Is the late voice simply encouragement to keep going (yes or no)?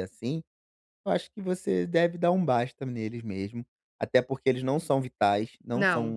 yes